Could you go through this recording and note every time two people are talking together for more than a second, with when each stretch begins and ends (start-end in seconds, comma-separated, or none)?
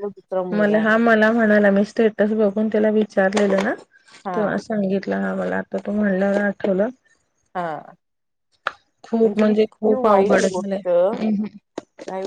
9.2-10.9